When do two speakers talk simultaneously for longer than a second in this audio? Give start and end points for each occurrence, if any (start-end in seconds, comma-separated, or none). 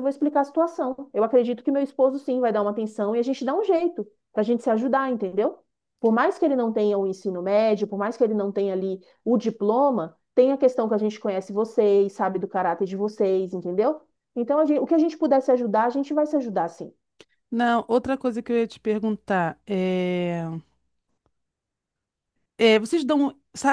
none